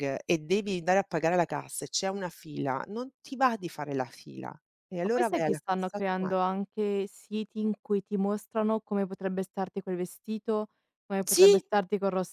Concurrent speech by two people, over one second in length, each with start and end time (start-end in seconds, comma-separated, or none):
5.0-6.3